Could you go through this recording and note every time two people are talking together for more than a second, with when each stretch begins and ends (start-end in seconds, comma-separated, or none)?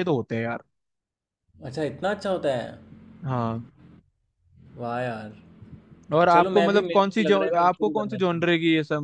6.3-8.4